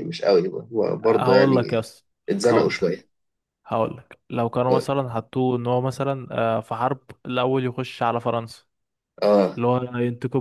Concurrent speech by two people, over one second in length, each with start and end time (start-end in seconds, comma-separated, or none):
none